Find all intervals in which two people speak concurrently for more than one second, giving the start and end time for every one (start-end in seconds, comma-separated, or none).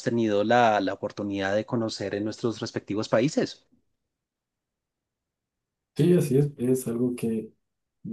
none